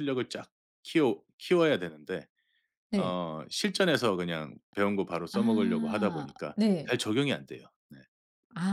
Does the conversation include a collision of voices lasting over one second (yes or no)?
yes